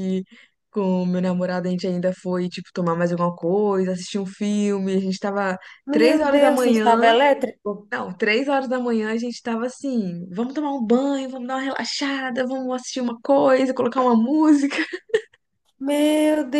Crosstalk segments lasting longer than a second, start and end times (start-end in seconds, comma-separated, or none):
5.9-7.1